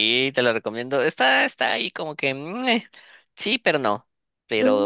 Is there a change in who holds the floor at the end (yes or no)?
no